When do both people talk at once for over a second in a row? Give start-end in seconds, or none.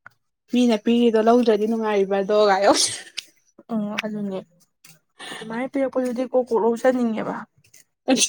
none